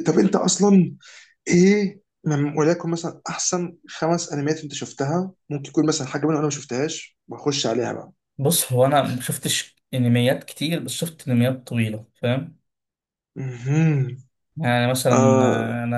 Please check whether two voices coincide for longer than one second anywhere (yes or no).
no